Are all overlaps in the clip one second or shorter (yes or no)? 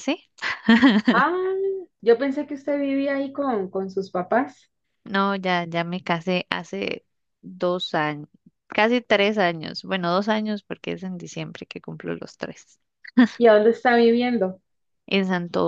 yes